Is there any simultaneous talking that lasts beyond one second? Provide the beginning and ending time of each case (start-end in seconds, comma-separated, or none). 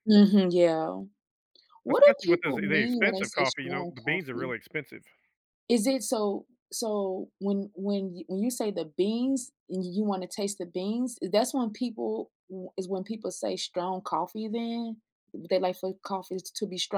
1.9-4.5